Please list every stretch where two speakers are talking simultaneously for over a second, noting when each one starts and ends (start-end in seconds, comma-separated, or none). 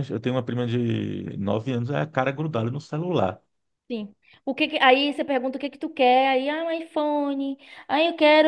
none